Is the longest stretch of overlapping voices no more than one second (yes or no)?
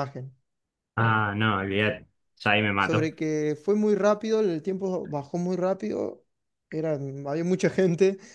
yes